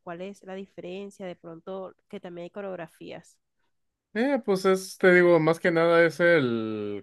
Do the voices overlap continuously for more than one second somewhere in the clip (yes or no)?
no